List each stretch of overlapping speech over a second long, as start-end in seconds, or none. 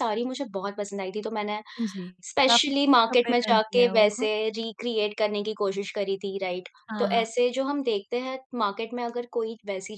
2.5-4.3